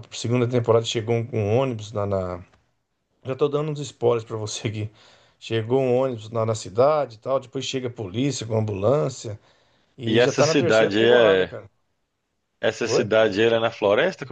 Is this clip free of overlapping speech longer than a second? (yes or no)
no